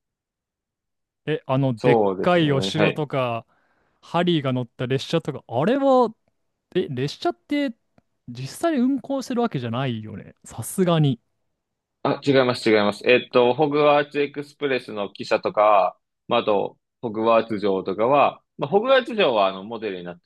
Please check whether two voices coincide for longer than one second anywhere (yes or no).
yes